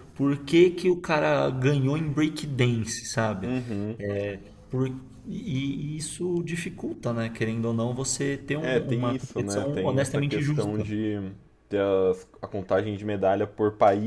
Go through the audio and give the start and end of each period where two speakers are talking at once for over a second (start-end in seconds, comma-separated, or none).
8.6-10.9